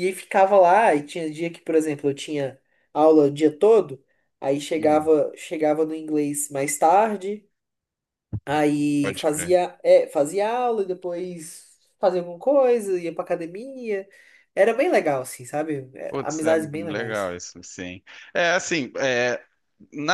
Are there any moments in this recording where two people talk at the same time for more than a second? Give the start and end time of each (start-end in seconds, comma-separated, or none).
16.1-17.3